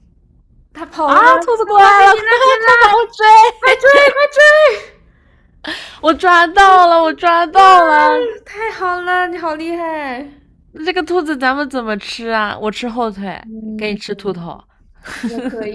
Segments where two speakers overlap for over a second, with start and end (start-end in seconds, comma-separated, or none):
1.0-3.0